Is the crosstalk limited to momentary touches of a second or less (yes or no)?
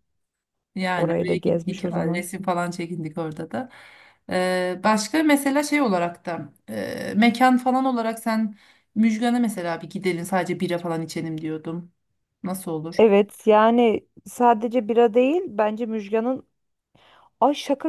no